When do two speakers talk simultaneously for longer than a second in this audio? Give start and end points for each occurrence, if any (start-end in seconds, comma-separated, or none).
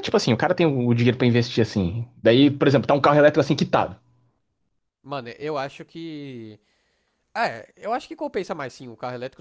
none